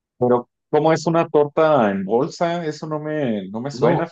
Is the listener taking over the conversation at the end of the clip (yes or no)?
yes